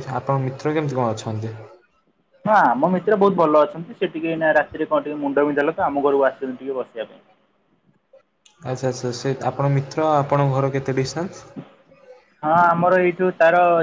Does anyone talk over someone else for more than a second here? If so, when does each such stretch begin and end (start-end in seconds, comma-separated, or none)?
none